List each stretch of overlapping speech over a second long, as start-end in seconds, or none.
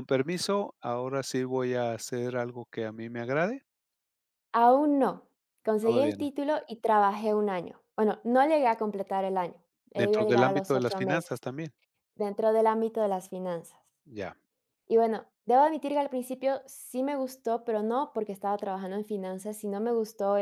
9.9-11.4